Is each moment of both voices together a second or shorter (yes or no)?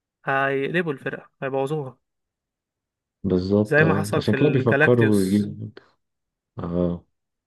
no